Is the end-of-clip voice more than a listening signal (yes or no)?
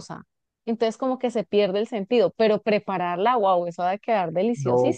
yes